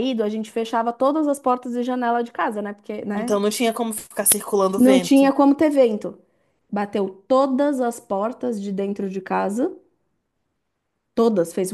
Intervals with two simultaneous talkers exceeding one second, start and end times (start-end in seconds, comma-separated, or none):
none